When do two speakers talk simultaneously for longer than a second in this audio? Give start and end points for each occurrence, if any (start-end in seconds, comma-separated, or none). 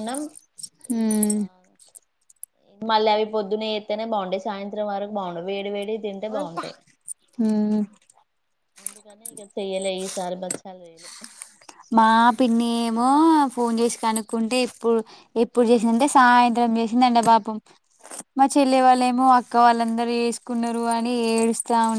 none